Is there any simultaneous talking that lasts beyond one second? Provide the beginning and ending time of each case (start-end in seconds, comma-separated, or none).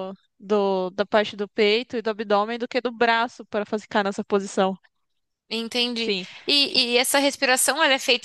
none